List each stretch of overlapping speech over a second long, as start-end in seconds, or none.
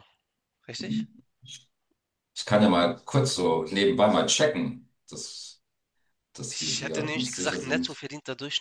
6.5-8.0